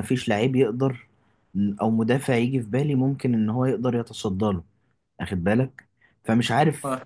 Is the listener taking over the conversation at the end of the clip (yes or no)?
no